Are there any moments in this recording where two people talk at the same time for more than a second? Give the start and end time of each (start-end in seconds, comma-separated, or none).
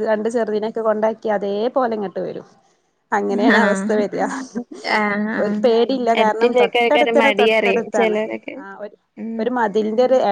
6.2-8.2